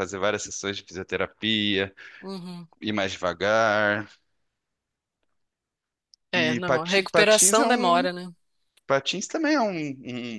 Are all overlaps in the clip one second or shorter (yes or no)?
no